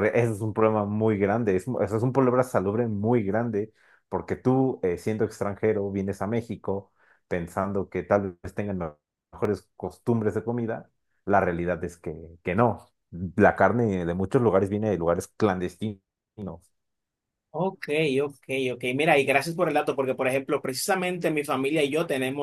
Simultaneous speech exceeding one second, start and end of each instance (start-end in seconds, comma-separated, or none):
none